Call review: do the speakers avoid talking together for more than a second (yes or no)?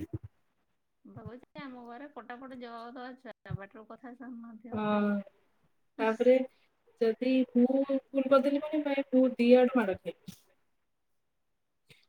yes